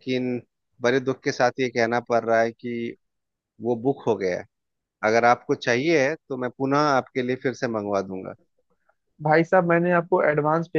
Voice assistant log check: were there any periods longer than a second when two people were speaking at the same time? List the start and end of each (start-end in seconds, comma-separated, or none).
none